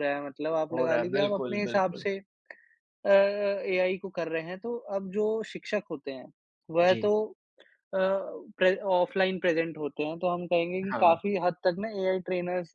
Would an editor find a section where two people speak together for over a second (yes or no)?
yes